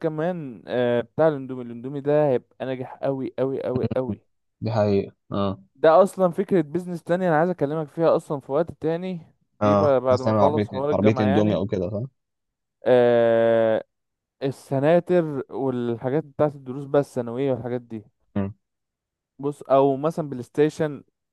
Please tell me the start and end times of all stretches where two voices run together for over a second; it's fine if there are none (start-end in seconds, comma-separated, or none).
9.6-11.6